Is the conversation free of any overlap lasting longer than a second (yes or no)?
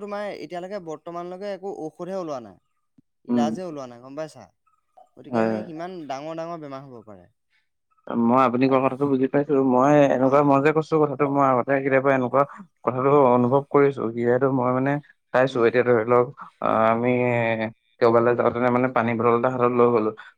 yes